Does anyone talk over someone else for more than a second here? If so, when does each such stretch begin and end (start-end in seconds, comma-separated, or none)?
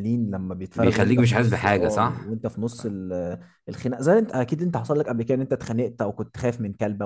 0.7-2.4